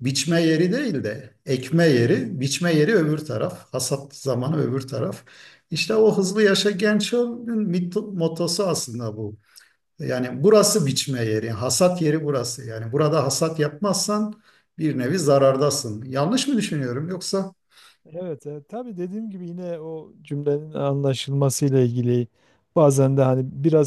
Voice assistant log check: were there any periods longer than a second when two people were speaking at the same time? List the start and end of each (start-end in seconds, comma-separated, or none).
none